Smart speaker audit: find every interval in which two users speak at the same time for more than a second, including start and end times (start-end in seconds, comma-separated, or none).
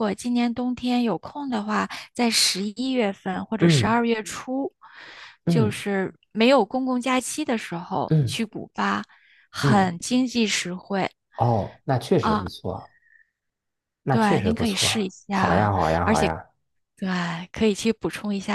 14.1-15.7